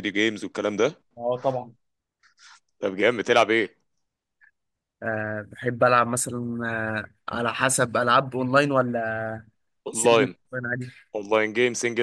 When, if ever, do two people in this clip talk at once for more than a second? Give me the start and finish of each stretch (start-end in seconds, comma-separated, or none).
none